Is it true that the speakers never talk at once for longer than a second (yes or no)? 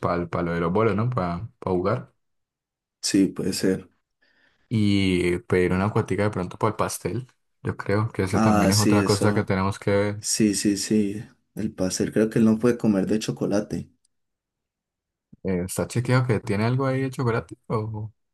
no